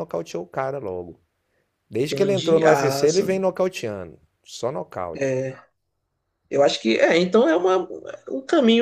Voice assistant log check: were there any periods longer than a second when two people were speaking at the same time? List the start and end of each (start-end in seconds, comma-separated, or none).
2.1-3.5